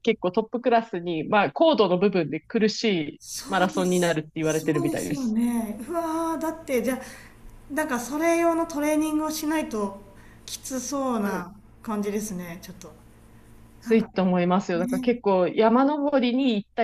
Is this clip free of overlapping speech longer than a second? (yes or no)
no